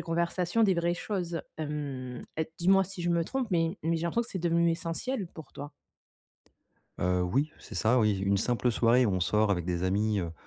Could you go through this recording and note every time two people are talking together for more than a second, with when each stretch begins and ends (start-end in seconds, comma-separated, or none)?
none